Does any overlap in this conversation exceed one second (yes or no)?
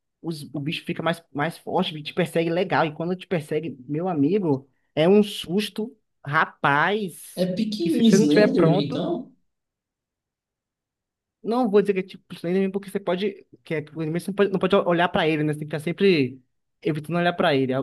yes